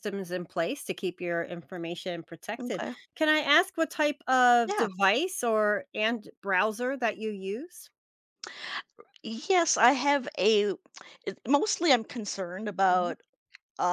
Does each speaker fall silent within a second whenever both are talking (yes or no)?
yes